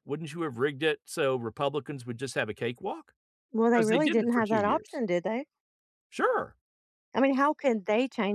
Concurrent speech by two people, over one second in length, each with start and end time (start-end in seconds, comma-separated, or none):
3.7-5.0